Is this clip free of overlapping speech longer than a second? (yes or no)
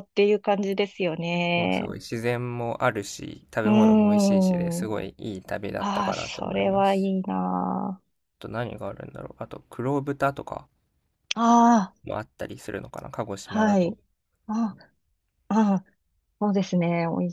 no